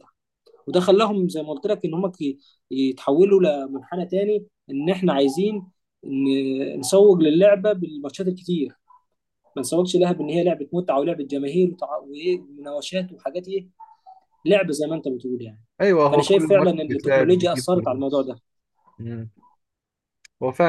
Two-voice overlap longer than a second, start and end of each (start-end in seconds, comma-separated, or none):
16.1-18.3